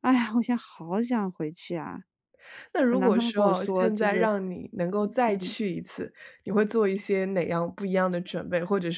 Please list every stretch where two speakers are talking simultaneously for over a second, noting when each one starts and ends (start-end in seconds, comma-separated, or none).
2.9-4.3